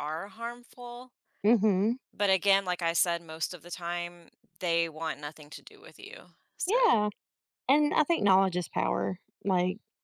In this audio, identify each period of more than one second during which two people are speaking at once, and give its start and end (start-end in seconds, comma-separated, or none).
none